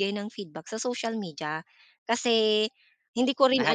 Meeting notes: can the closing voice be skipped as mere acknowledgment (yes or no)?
yes